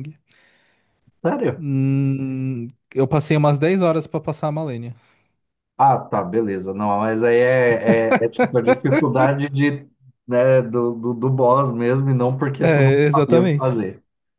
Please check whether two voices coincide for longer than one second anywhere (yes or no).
yes